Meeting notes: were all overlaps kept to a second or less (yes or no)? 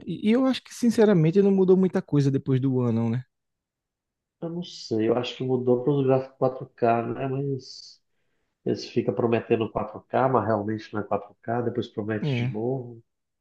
yes